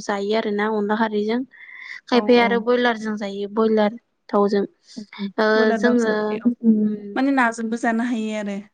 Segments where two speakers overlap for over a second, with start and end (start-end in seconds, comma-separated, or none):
none